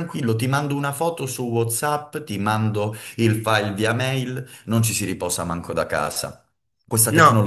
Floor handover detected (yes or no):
no